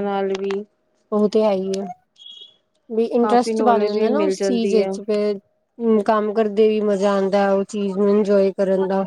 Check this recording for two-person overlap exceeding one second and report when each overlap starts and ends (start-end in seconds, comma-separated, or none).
3.2-4.9